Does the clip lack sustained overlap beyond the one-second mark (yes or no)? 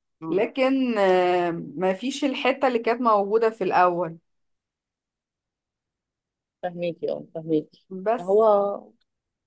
yes